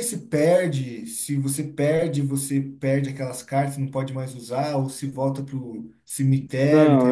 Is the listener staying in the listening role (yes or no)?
no